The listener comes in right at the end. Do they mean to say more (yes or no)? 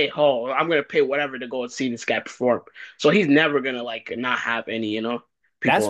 yes